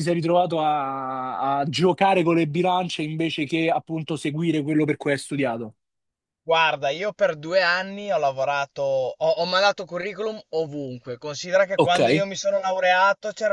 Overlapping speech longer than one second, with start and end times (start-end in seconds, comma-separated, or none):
none